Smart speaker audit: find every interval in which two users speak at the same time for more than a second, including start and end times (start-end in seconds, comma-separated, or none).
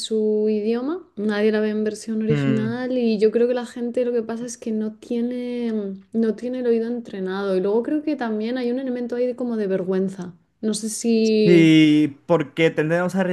none